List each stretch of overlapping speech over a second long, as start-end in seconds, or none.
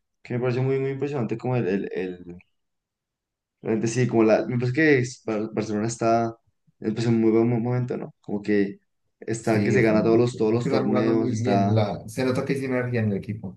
9.4-11.8